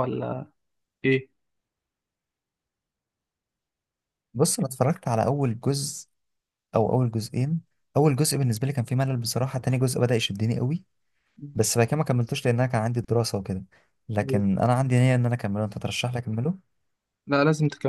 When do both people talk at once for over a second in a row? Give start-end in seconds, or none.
none